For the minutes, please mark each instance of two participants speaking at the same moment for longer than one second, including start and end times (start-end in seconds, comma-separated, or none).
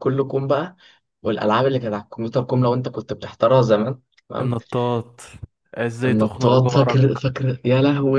6.0-7.3